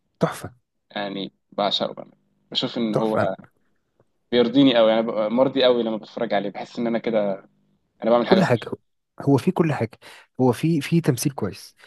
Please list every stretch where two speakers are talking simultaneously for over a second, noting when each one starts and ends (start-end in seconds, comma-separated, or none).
none